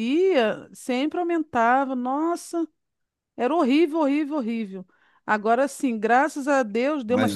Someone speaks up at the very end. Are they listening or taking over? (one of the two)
listening